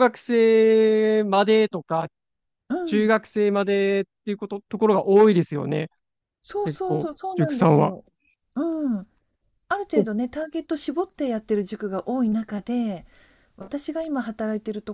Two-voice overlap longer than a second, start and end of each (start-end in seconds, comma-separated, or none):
6.6-8.0